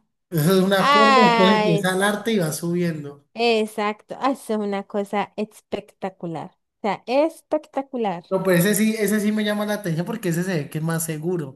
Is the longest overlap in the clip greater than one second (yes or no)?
yes